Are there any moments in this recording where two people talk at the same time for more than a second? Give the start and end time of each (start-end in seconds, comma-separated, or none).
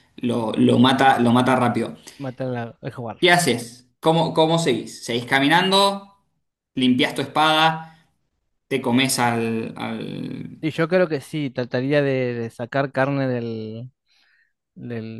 none